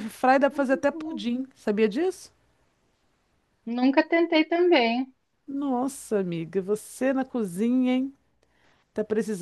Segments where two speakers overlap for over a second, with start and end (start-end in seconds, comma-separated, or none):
none